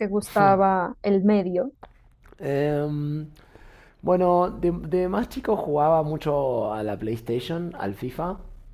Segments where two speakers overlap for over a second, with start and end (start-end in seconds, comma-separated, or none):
none